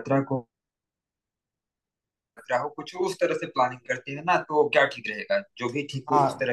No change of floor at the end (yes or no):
no